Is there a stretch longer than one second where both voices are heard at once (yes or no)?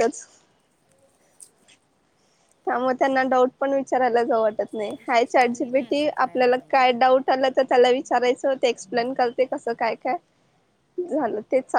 yes